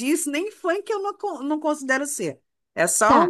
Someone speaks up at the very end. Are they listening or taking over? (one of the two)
taking over